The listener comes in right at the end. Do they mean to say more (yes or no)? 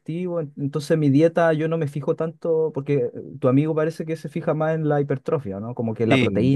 no